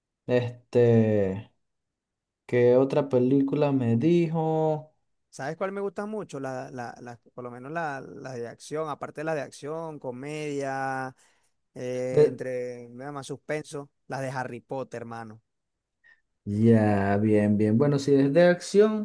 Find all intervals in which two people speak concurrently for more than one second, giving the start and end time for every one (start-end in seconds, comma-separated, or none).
none